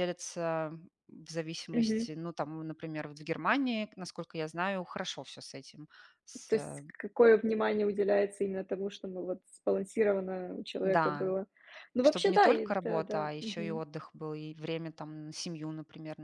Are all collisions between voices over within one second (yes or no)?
no